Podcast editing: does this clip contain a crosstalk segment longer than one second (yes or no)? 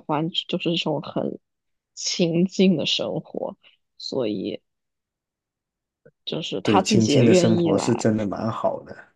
yes